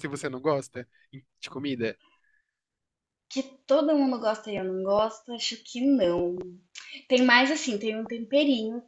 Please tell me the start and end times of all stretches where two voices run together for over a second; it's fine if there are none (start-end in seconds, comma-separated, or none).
none